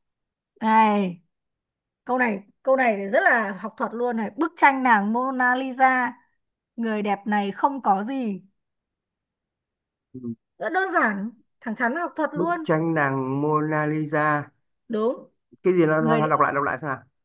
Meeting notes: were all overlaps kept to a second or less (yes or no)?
yes